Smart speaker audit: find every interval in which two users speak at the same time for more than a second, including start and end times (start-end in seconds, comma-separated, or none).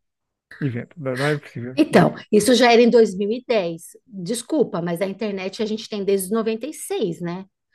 none